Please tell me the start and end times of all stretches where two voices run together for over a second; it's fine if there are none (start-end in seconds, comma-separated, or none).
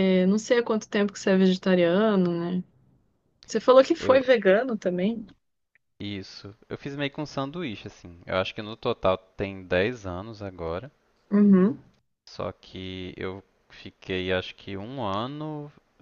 none